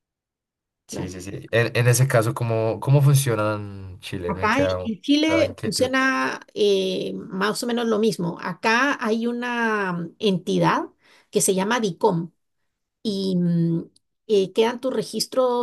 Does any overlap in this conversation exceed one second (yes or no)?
yes